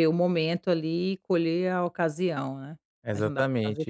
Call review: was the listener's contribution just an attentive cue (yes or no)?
no